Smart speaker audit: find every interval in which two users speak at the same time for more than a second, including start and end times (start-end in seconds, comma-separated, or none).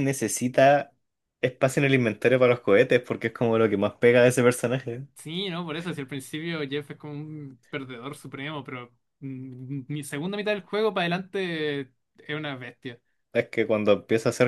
none